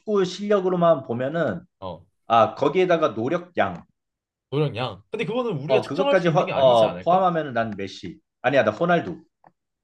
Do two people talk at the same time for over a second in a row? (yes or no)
yes